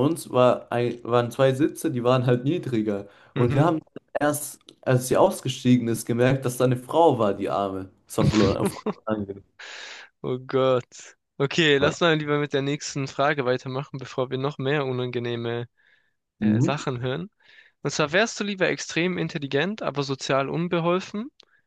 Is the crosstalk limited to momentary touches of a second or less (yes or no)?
yes